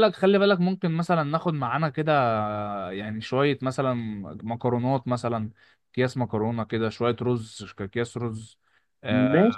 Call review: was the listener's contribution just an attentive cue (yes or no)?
yes